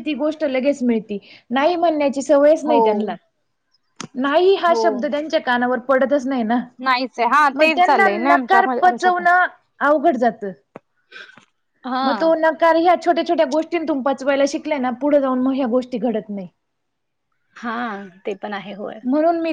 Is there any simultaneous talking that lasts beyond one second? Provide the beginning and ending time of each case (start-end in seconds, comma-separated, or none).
7.6-9.2